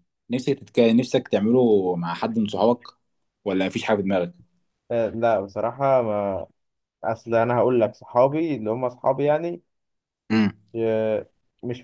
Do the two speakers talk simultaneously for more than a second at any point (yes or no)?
no